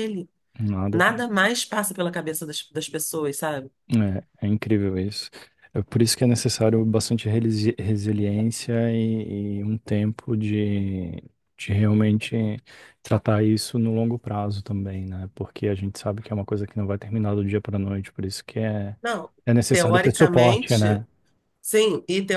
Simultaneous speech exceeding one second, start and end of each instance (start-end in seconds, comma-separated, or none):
19.7-21.0